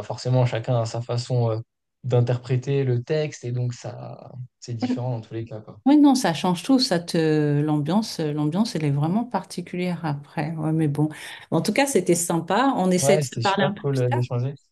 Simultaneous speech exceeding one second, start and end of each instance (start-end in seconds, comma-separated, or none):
13.0-14.2